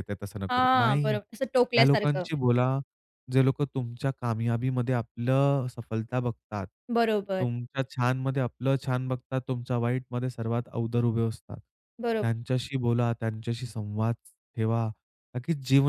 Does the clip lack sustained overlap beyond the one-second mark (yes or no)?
no